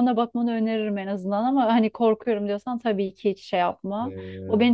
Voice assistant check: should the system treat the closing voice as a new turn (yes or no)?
no